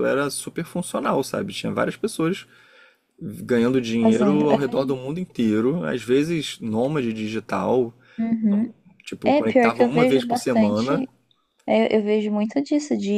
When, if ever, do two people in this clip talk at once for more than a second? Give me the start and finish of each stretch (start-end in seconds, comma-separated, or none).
9.2-10.9